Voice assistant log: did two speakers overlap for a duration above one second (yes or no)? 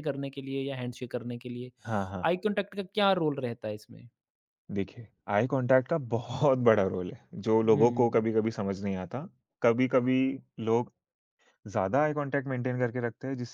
no